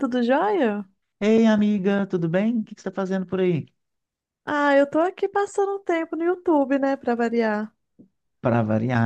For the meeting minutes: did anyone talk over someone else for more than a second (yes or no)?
no